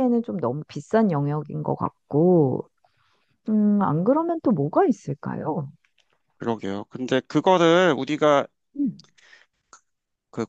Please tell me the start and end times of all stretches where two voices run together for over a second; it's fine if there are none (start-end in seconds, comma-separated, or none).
none